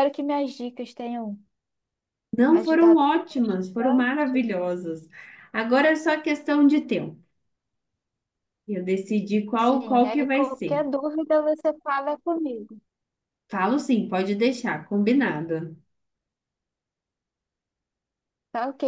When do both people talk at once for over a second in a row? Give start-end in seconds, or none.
2.6-4.5, 9.6-10.9